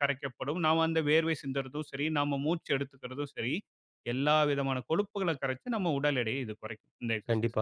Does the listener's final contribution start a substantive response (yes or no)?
yes